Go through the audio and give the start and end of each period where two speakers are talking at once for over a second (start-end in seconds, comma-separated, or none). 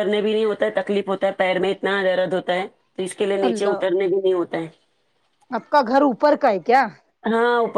none